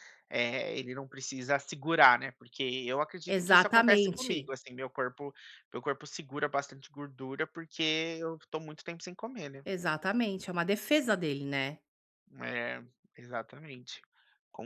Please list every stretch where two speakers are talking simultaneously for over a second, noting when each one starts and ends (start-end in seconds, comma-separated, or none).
3.3-4.5